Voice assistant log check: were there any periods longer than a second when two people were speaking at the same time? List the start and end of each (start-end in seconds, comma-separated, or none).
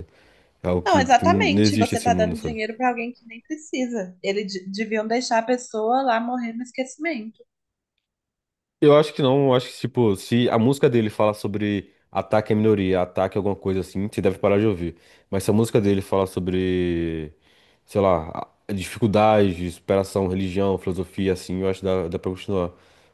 0.8-2.5